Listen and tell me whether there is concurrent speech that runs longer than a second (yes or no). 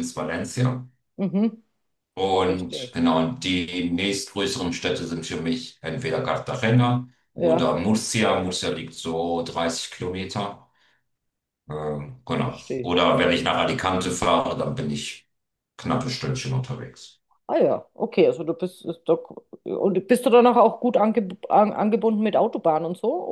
no